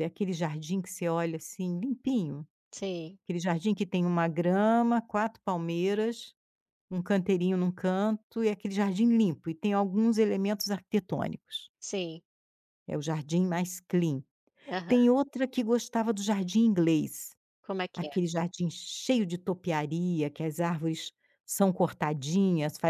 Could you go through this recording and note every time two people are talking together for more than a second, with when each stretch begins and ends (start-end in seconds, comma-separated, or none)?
none